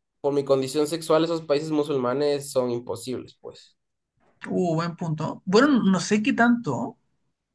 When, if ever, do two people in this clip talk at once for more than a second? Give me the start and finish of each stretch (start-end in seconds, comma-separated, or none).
none